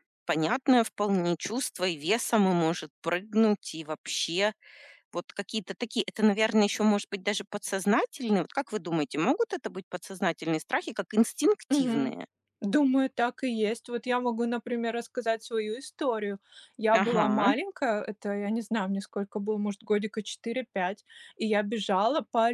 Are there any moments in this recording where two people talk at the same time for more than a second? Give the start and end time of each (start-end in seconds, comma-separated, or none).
none